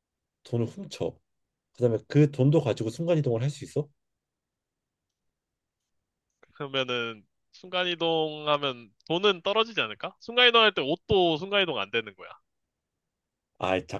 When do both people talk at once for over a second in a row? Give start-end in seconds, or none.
none